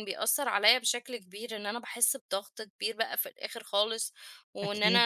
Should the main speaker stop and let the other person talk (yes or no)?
no